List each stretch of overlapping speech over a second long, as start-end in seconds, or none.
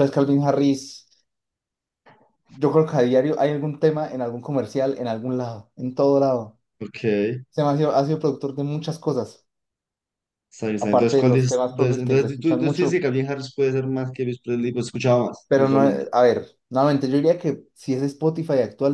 10.8-13.1